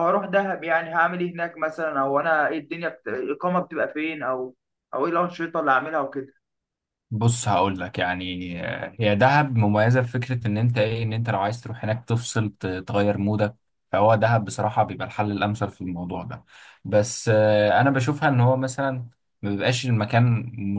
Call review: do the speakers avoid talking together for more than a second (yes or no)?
yes